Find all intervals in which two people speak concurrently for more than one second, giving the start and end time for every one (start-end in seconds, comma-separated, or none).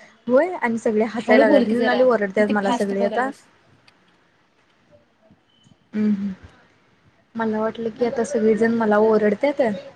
1.3-3.3